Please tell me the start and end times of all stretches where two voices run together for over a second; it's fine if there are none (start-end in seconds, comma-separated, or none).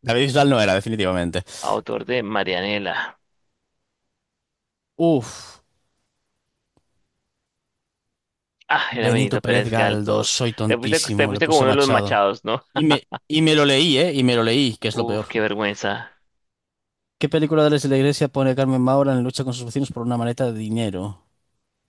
9.0-12.1